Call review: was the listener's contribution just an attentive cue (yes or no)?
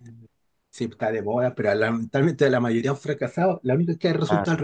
yes